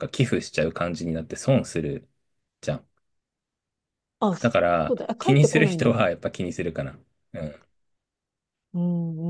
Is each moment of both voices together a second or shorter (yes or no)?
no